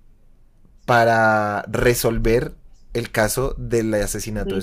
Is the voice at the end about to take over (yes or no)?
no